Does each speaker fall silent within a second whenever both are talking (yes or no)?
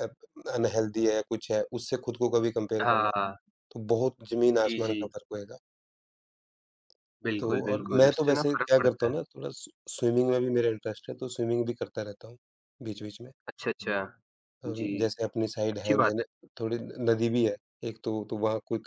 no